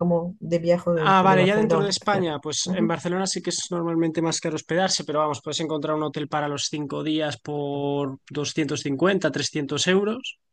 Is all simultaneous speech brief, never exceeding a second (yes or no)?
no